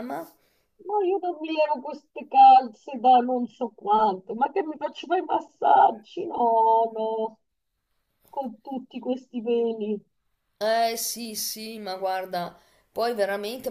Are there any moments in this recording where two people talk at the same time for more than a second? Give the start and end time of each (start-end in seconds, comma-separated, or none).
none